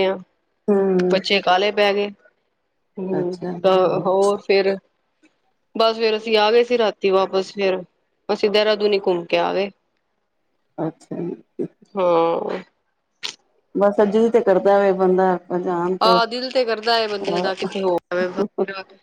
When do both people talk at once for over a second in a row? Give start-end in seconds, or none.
none